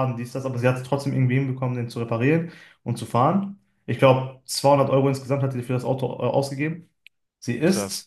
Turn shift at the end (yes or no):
no